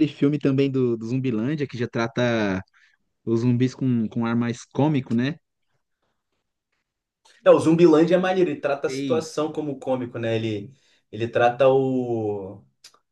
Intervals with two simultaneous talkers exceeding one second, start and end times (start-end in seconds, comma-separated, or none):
none